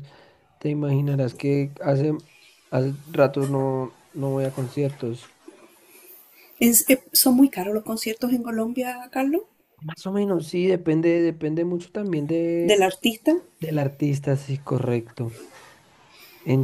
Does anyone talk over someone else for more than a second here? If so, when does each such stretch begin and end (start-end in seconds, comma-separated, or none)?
none